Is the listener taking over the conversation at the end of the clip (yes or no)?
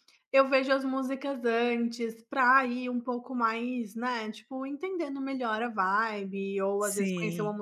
no